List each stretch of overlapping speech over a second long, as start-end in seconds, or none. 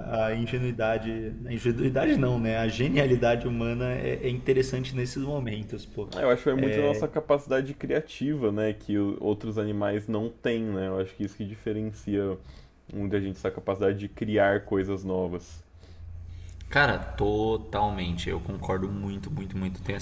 none